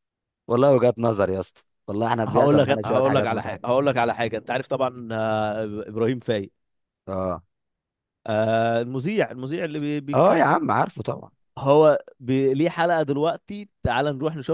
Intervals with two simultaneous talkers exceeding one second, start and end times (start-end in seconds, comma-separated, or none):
2.3-3.7